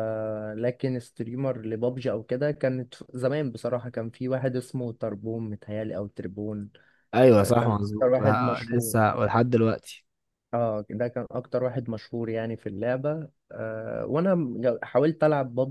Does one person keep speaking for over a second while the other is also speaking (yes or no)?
yes